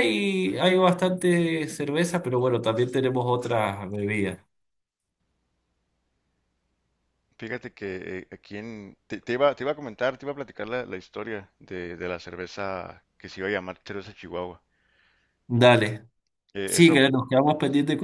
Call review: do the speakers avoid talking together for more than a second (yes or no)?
yes